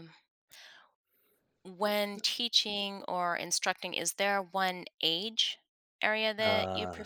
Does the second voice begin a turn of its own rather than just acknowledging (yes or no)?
no